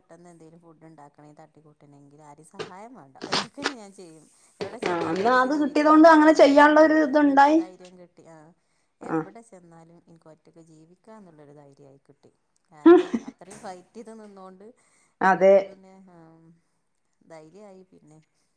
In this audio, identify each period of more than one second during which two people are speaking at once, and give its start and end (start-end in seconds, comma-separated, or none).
4.9-6.9